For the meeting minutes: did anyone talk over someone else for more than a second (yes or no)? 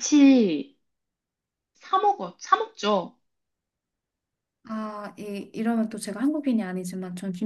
no